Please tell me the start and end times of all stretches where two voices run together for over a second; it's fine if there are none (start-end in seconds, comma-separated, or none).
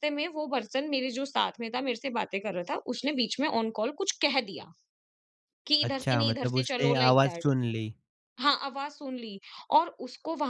5.9-7.5